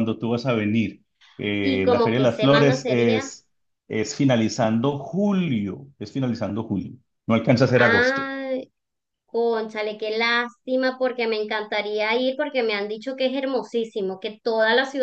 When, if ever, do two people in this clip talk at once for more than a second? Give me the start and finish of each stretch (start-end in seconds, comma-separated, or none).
1.6-3.3